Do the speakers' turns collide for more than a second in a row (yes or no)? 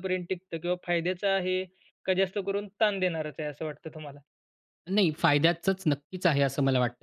no